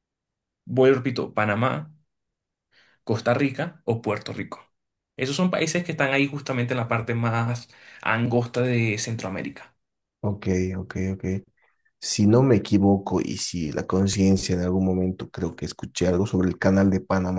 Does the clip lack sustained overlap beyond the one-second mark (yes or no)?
yes